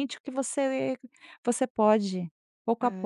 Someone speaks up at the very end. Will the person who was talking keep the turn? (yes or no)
no